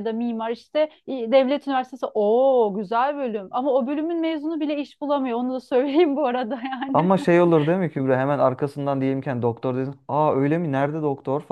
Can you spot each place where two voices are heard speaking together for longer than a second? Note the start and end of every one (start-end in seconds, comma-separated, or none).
none